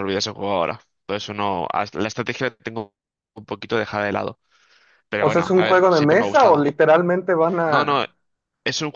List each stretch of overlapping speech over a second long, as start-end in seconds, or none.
5.2-6.7